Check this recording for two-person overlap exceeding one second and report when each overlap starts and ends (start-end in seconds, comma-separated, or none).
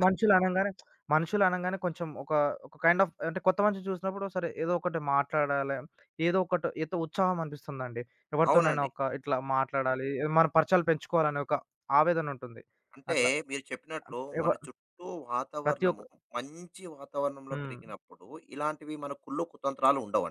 none